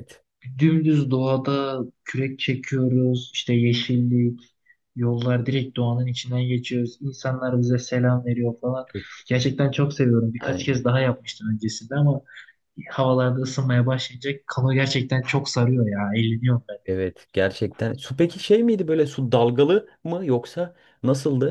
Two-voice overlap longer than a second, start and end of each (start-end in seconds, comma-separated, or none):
none